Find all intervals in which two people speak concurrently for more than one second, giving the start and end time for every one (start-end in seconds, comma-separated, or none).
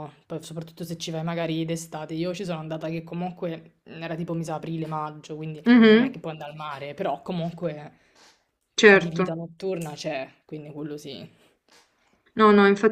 none